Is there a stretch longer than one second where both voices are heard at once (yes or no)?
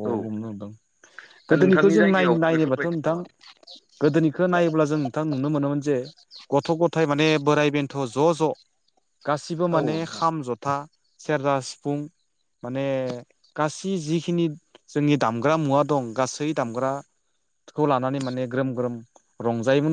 yes